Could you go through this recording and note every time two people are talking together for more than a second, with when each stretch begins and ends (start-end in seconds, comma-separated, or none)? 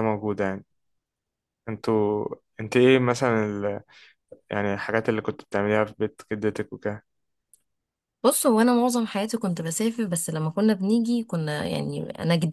none